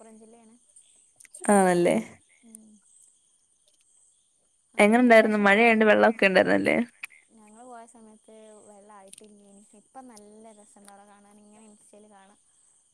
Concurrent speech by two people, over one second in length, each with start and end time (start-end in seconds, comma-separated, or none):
4.8-6.1